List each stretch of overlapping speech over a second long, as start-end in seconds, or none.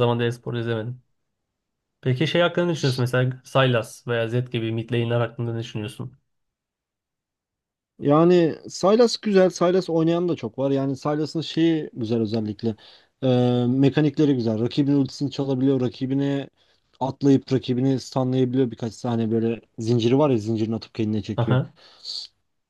none